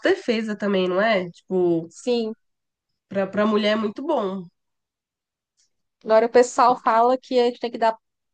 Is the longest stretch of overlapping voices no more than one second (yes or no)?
yes